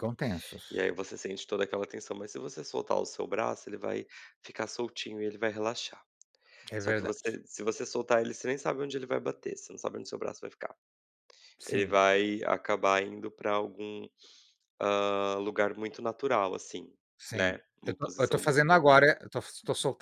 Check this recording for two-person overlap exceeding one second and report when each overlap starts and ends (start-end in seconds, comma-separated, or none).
17.3-19.1